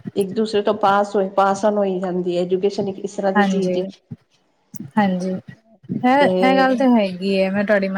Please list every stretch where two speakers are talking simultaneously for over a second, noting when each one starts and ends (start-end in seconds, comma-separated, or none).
none